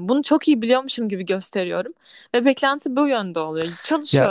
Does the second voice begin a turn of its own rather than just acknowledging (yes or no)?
no